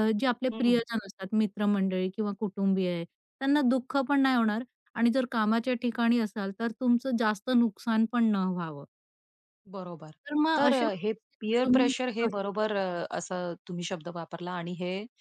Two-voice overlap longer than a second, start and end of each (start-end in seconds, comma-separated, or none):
10.6-12.7